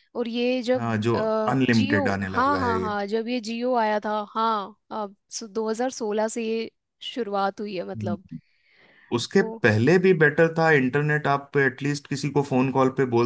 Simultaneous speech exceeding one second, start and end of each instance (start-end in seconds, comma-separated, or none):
0.7-2.8